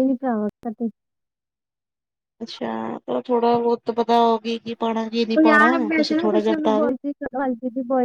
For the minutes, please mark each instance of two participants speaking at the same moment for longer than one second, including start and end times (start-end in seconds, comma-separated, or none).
none